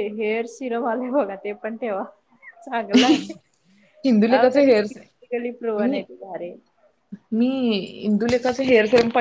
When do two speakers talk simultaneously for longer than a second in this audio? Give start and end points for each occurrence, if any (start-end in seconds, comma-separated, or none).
none